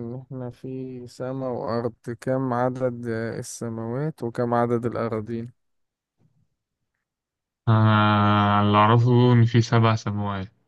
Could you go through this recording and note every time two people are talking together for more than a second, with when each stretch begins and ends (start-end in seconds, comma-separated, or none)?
none